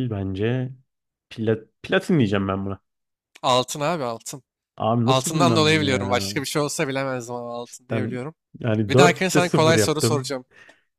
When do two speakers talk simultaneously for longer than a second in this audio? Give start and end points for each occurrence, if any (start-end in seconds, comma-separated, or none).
5.0-6.3, 8.9-10.3